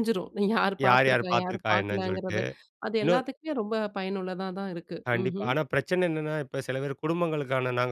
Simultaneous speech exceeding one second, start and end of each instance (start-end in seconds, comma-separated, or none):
0.9-2.4